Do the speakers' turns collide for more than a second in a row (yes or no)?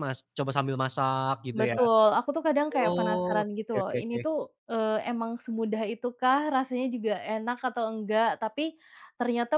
yes